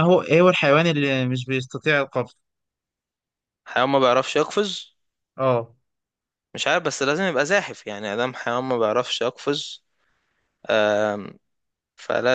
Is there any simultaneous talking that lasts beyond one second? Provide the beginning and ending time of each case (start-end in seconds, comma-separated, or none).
none